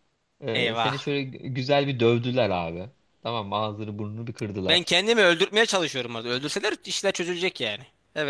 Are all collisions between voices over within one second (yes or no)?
yes